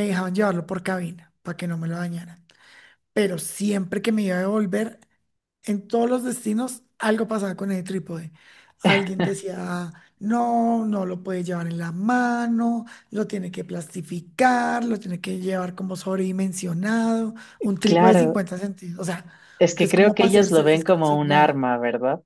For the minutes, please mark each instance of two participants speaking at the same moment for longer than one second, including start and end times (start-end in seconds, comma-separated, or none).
19.8-21.6